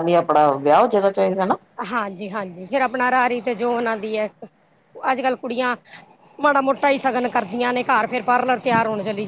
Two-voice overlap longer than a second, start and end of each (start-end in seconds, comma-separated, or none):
none